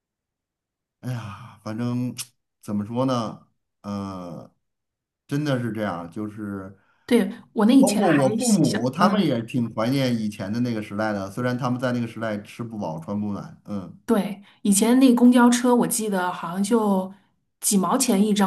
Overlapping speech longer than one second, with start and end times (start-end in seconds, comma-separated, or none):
7.8-9.3